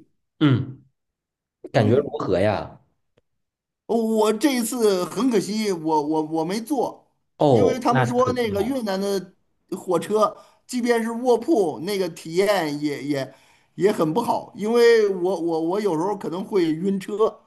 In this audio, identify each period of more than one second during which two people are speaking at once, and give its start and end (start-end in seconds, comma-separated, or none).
7.5-8.8